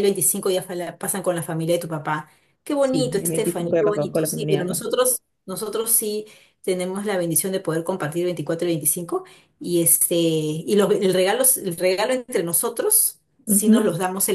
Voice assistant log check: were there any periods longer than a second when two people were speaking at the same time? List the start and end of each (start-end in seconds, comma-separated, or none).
2.8-4.8